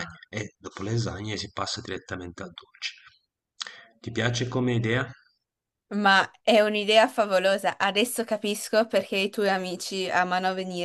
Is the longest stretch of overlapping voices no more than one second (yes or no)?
yes